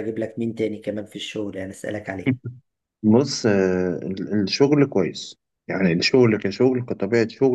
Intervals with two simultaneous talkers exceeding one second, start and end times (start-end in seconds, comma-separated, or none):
none